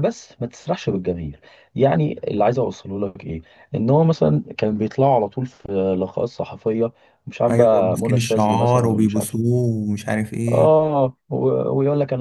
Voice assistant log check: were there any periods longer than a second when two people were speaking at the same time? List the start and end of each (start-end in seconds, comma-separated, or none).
7.5-9.4